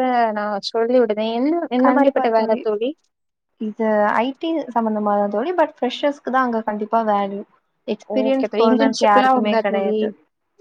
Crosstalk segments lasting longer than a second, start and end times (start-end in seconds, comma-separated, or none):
8.2-10.0